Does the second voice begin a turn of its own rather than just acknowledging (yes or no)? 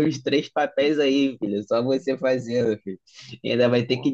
no